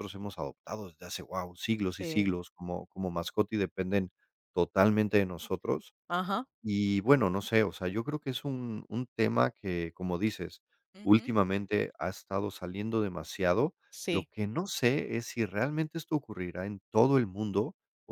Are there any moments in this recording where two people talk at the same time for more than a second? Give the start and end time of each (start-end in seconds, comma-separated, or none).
none